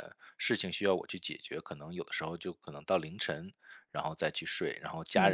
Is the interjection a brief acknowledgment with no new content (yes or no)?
yes